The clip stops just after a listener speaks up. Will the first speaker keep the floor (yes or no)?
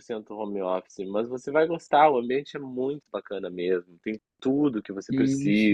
yes